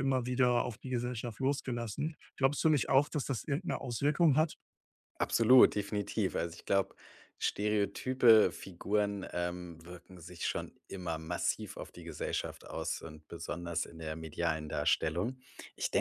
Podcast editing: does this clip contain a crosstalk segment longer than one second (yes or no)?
no